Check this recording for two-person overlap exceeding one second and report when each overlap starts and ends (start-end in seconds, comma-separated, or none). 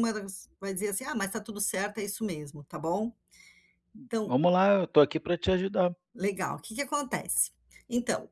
none